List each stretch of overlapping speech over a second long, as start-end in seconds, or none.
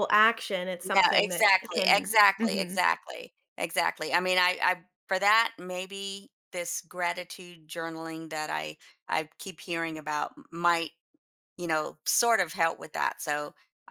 0.8-2.8